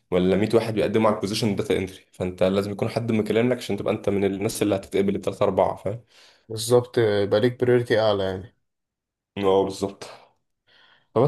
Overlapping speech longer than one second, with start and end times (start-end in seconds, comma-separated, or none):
none